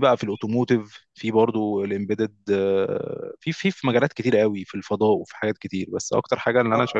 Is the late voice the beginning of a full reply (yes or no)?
no